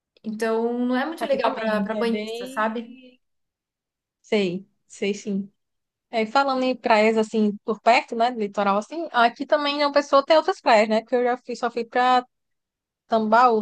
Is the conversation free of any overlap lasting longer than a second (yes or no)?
no